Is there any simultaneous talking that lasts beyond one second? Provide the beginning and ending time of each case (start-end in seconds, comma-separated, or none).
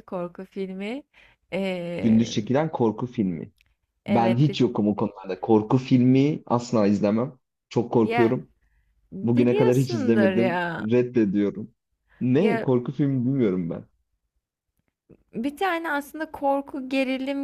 9.2-10.9